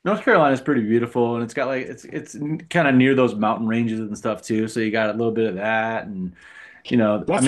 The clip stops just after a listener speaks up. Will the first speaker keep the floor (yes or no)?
no